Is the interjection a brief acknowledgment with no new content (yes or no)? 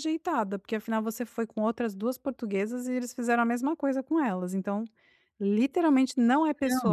no